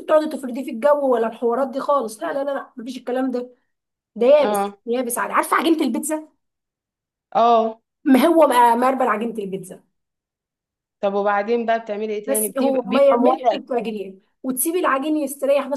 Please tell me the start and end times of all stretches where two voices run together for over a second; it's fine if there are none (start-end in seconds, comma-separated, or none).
12.2-14.1